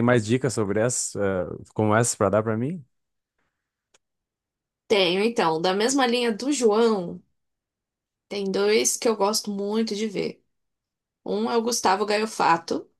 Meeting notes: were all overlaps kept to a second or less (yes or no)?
yes